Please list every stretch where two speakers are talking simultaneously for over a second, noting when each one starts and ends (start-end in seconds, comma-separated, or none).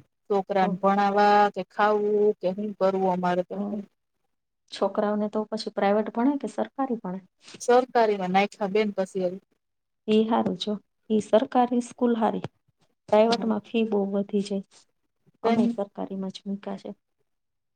none